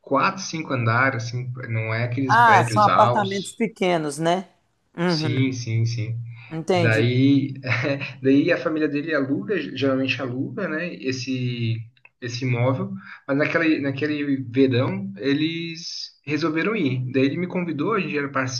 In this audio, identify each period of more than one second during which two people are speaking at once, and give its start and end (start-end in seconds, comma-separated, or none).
2.3-3.6